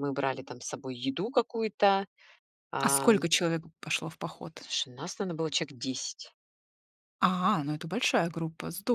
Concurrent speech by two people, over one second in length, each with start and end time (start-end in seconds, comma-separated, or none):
none